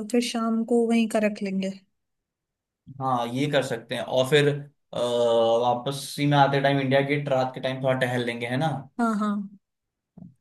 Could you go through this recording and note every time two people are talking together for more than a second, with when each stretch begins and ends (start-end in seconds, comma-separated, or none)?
none